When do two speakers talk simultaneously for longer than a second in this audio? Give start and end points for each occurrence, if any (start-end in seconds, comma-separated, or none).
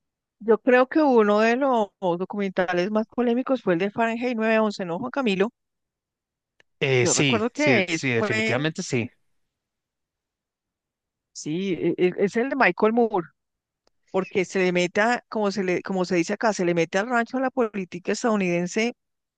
7.0-8.6